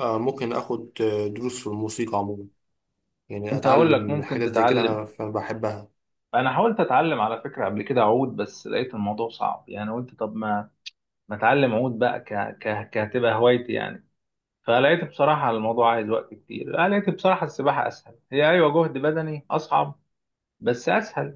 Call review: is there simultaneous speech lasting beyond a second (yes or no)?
yes